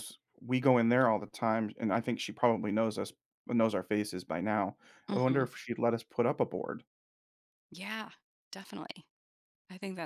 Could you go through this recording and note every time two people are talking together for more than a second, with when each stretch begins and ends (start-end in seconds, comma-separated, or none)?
none